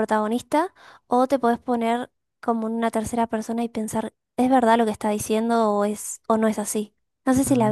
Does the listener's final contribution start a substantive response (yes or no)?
yes